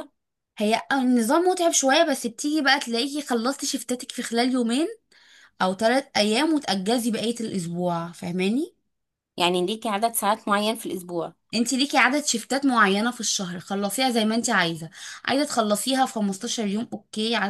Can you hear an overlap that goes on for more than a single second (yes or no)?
no